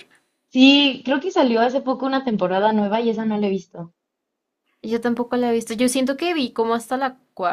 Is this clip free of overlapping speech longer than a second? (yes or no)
yes